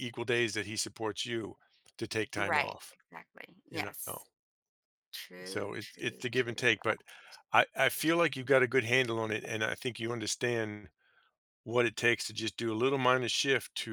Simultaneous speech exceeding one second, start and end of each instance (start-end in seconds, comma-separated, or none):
5.5-6.7